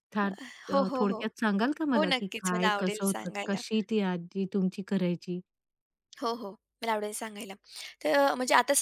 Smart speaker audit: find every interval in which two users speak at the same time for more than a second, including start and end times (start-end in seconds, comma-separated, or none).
1.9-3.6